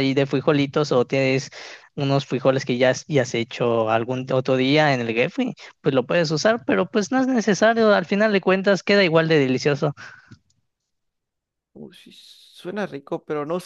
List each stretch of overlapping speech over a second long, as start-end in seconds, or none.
none